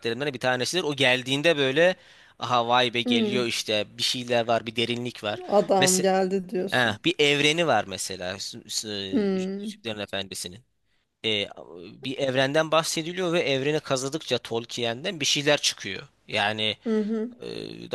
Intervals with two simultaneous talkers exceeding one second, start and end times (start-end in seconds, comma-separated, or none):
none